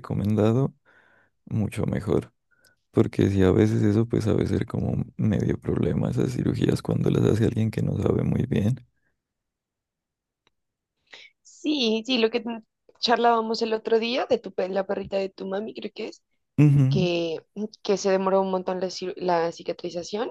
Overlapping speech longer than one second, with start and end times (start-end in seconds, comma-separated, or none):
none